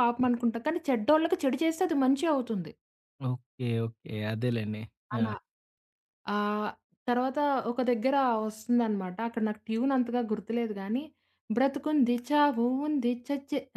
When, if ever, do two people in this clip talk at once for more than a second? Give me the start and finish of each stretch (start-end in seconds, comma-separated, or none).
none